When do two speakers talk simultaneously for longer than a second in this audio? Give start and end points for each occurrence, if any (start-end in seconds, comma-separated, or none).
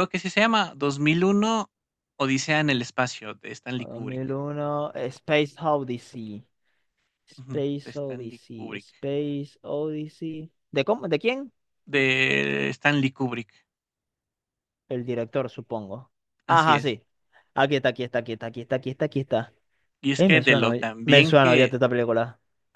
7.4-8.9, 20.1-21.8